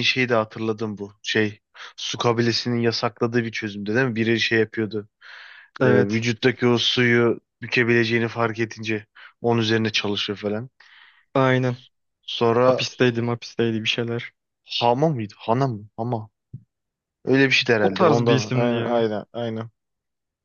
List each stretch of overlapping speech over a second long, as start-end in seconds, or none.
17.8-19.1